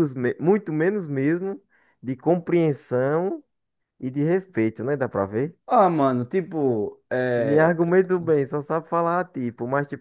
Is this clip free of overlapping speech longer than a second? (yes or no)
yes